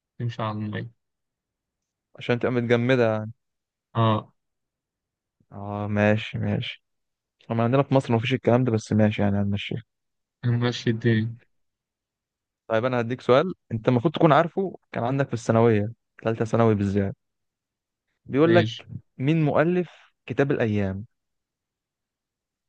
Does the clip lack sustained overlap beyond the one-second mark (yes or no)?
yes